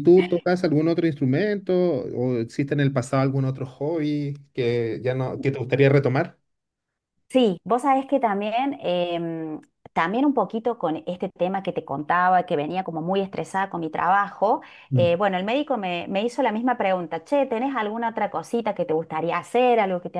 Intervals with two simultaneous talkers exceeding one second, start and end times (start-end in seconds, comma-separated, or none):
none